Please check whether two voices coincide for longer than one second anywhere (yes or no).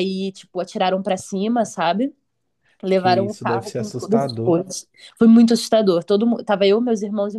yes